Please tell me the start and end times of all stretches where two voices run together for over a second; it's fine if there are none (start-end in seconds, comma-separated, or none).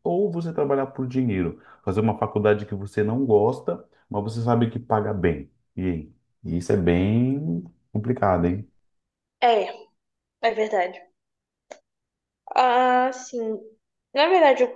none